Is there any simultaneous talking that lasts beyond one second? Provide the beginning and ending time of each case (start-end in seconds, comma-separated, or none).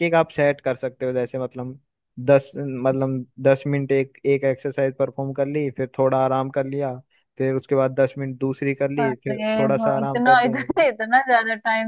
9.0-10.8